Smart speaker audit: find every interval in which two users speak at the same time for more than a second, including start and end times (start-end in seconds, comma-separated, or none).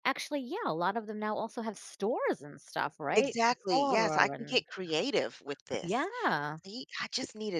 3.1-4.6